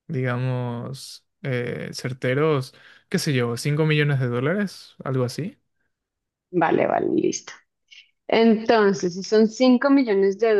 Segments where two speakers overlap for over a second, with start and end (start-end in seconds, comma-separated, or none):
none